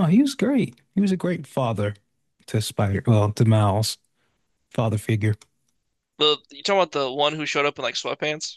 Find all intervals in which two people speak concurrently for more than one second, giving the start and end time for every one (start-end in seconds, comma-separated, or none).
none